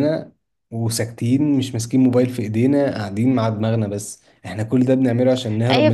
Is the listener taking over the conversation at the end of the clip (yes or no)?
yes